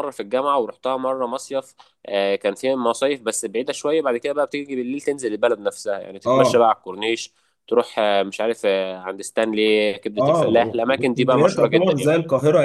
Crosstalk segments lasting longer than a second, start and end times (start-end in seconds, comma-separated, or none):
10.2-12.1